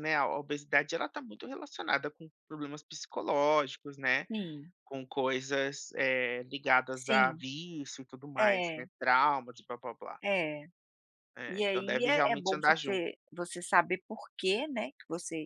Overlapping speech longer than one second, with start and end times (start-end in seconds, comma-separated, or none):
11.5-13.0